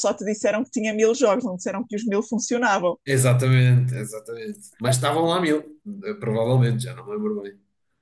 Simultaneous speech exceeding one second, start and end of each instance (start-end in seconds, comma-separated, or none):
none